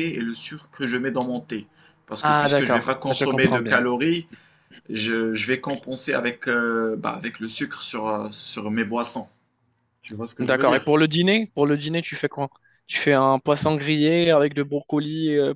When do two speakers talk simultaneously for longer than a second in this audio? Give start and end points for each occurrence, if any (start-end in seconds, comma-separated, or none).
2.2-3.8